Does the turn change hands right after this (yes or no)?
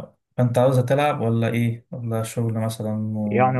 yes